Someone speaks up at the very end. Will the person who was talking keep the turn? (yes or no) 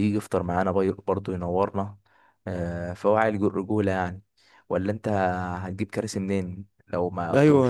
no